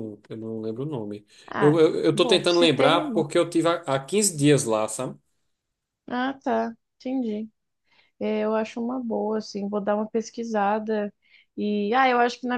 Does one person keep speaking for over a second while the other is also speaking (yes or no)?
yes